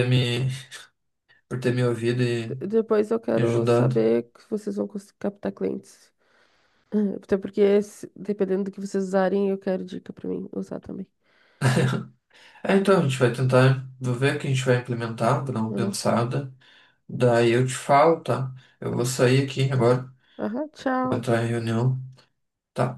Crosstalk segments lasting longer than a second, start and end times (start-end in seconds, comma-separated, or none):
none